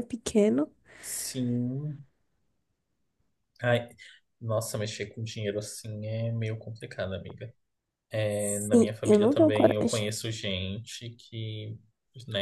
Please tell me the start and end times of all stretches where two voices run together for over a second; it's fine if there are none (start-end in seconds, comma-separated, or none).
8.6-10.0